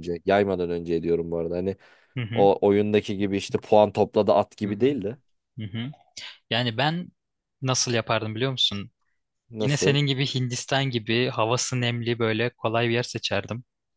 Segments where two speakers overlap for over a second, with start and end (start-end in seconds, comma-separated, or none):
none